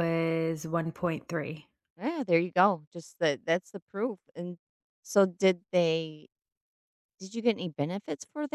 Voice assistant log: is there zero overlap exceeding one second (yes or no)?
yes